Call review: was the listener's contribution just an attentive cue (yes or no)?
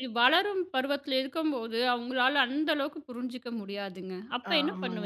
no